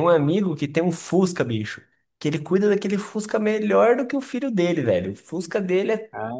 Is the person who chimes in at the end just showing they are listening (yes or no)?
yes